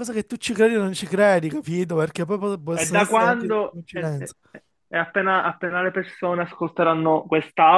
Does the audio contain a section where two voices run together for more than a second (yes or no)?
yes